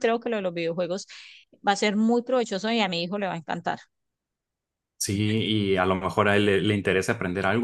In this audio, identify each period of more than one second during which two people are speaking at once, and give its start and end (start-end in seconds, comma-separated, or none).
none